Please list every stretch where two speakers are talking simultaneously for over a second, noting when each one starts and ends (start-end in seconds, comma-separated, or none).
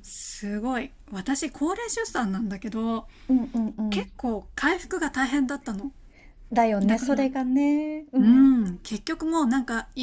none